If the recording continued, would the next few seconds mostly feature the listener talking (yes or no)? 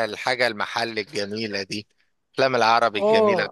yes